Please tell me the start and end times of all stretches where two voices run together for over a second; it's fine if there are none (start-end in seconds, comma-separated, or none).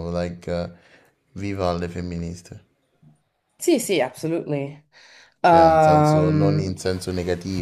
5.4-6.8